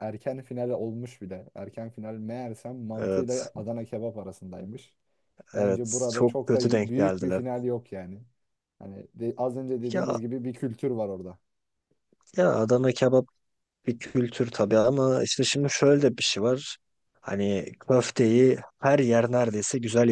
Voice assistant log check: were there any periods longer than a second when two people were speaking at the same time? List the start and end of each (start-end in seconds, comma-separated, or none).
5.5-7.4